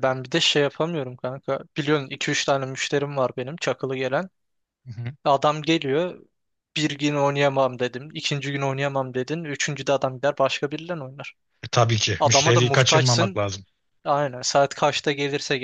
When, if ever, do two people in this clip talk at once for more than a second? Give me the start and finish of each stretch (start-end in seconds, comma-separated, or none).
12.2-13.4